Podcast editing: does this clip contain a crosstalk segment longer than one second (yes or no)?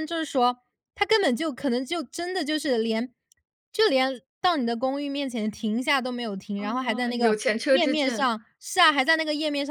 yes